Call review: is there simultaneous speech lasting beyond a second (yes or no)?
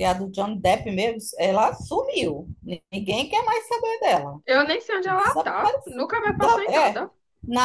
yes